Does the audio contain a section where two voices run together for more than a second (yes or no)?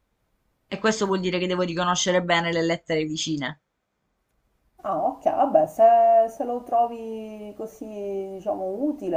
no